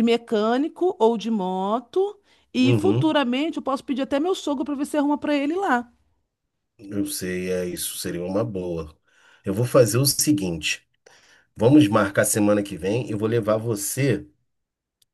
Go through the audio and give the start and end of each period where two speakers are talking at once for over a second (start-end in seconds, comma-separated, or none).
none